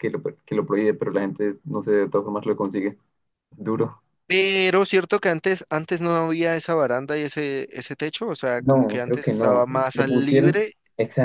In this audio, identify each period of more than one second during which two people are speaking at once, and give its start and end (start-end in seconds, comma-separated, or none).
8.6-10.7